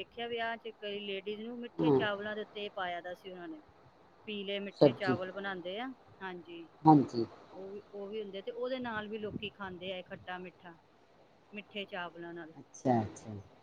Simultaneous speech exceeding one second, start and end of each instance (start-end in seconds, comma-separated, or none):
none